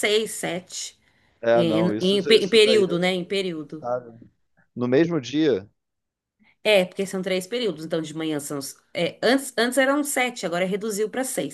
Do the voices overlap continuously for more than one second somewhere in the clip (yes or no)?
yes